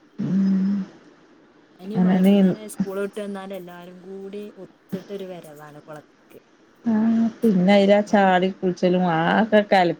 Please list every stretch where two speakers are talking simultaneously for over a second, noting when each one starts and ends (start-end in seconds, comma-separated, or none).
none